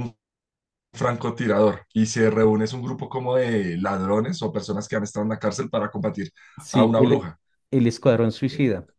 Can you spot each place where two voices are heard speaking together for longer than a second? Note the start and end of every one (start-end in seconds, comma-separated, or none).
none